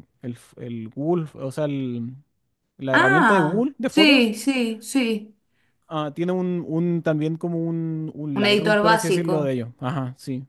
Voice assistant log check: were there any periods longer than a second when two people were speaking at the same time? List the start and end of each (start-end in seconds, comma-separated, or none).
2.9-4.3, 8.3-9.5